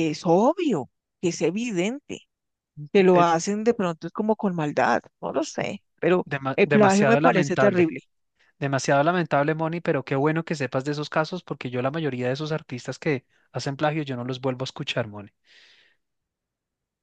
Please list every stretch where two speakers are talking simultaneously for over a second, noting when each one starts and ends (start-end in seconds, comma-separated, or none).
6.2-7.9